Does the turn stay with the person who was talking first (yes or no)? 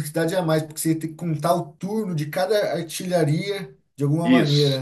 no